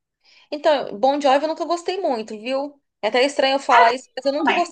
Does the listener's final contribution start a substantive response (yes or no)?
no